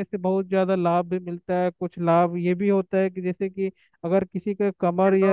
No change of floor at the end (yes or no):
yes